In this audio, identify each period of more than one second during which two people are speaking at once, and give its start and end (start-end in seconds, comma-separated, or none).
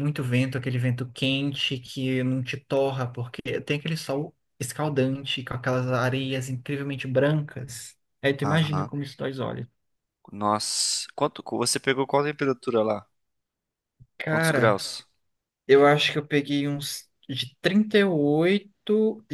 none